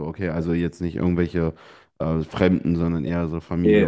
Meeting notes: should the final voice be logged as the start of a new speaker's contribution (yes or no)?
yes